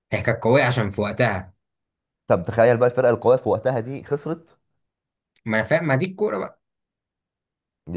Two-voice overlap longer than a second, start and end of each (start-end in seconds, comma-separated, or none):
none